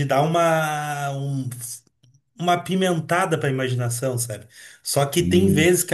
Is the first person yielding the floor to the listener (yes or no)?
no